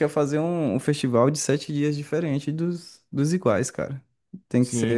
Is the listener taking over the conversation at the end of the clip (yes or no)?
yes